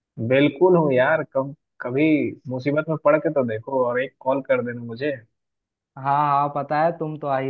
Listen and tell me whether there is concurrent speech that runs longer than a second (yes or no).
no